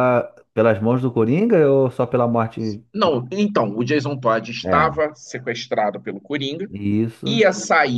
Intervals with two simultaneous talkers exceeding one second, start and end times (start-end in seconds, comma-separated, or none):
none